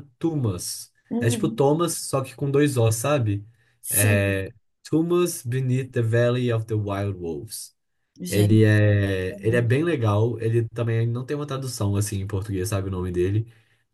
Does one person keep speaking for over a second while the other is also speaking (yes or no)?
no